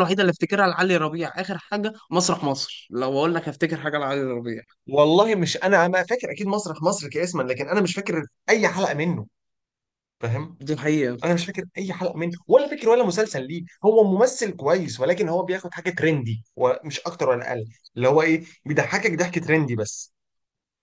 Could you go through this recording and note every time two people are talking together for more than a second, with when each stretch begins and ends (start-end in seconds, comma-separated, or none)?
none